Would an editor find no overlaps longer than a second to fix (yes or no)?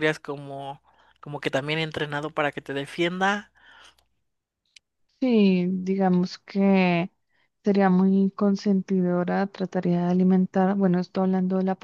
yes